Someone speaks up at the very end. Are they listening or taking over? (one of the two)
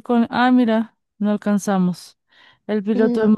listening